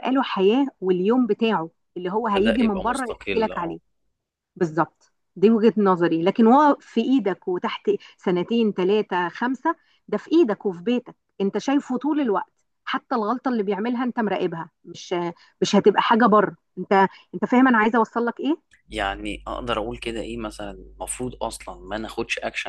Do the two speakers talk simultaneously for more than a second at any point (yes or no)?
yes